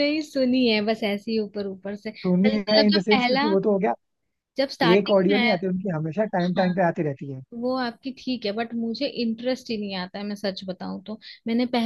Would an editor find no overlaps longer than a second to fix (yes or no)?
no